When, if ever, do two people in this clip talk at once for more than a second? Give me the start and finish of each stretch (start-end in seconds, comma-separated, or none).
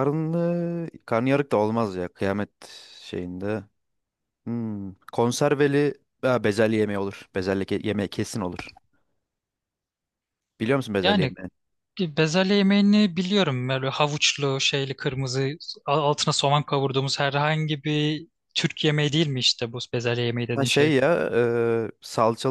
none